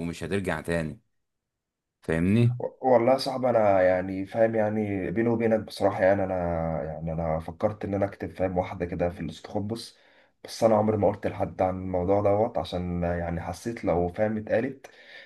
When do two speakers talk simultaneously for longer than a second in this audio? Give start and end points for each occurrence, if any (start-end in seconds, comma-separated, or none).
none